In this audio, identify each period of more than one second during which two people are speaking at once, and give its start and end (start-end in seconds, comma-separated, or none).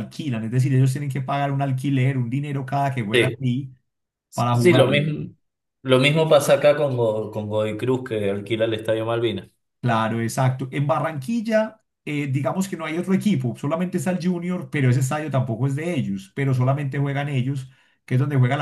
none